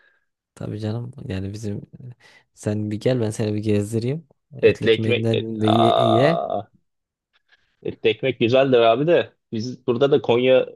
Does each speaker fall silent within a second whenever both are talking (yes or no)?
no